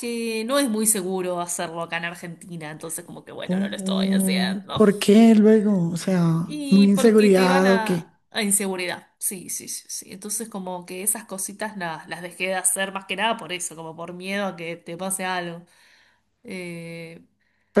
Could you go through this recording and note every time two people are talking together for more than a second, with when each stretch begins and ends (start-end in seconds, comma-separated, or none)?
3.5-4.8, 6.7-8.1